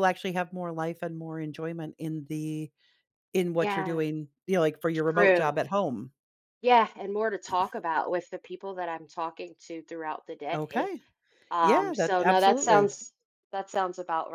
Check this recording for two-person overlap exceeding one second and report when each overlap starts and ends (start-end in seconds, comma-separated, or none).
11.6-12.9